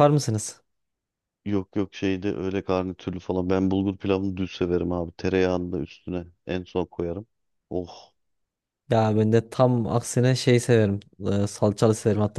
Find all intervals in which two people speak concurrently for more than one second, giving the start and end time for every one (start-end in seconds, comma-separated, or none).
none